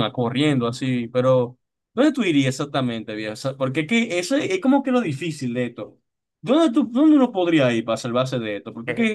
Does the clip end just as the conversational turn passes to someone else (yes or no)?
yes